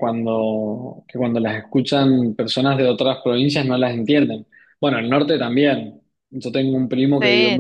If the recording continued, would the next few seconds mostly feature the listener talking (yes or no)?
no